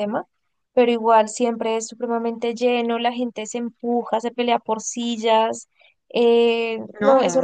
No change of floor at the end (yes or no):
yes